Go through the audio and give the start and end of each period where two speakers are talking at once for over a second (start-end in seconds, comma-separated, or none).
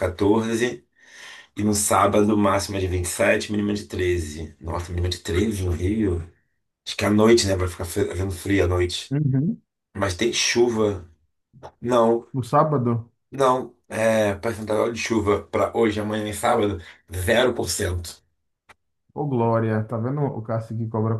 none